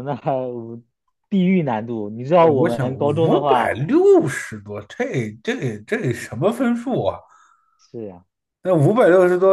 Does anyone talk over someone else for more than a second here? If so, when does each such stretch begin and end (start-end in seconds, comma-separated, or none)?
2.4-3.8